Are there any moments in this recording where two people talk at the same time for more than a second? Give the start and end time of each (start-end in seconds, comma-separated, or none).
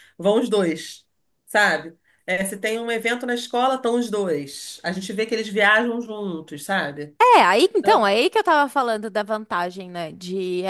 none